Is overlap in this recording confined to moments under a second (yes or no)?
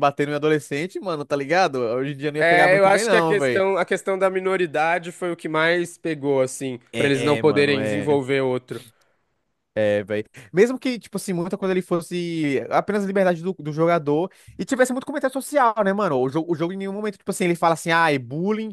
no